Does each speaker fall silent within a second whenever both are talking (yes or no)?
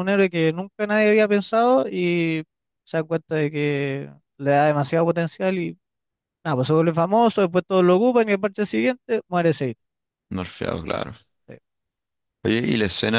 yes